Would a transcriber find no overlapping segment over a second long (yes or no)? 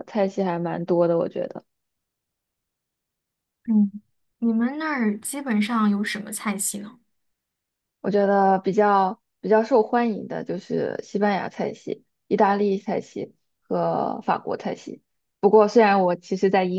yes